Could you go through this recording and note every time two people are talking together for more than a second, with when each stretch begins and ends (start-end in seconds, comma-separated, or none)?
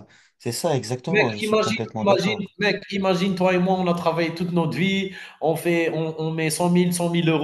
1.1-2.5